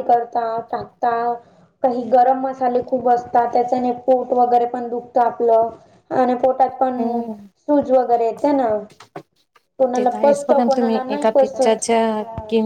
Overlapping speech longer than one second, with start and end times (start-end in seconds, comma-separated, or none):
9.9-11.8